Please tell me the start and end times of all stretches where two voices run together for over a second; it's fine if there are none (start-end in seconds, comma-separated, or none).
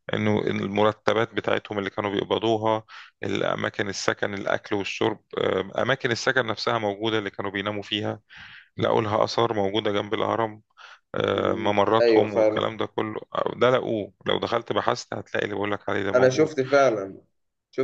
11.3-12.7